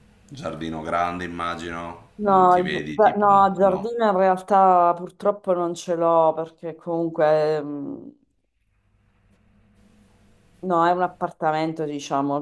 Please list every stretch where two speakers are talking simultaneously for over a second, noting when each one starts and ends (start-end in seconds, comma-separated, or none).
2.3-3.9